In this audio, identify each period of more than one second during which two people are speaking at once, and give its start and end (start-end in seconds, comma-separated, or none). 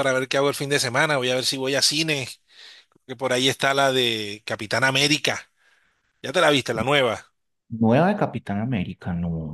none